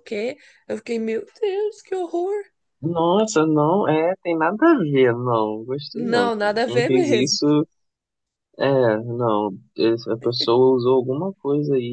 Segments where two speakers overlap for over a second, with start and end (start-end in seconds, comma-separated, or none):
5.9-7.4